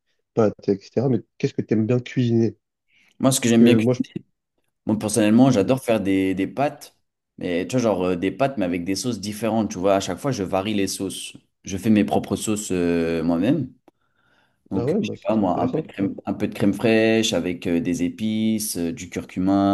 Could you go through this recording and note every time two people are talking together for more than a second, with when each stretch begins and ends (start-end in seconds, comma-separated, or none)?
14.8-16.1